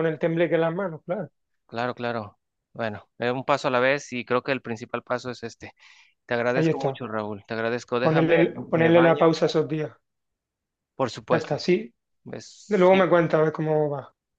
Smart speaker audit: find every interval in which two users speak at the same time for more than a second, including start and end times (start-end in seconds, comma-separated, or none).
8.0-9.3